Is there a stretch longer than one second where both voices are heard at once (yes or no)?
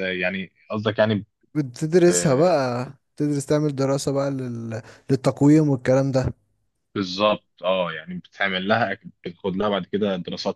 no